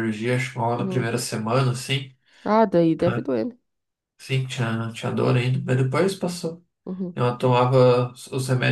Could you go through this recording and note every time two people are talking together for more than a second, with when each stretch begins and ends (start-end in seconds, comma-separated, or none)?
none